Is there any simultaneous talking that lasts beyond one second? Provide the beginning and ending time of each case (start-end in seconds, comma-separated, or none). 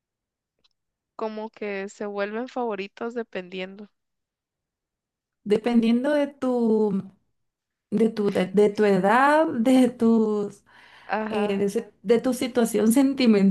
none